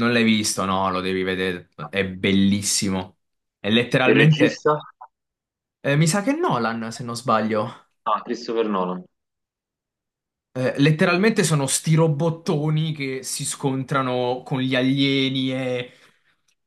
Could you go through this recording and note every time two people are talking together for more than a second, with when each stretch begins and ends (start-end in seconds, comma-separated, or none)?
none